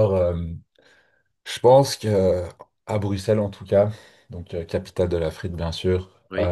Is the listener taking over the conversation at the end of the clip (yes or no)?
no